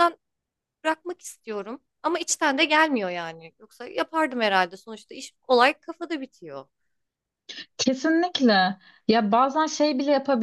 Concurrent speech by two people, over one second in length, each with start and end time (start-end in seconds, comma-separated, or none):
none